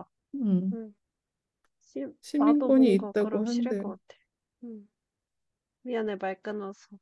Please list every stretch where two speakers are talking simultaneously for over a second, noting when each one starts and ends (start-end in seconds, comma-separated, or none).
2.2-3.9